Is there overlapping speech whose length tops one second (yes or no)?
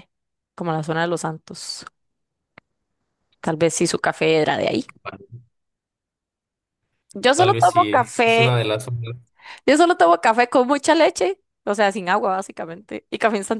yes